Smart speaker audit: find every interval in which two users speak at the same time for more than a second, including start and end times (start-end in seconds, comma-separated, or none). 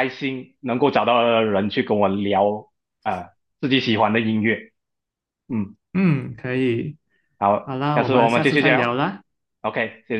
7.6-9.0